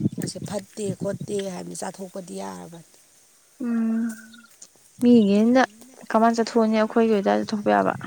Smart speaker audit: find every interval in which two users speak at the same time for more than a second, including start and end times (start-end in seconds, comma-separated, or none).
none